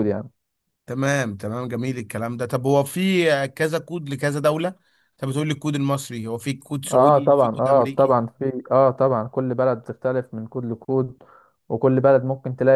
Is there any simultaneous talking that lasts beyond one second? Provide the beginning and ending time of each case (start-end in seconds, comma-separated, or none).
6.9-8.2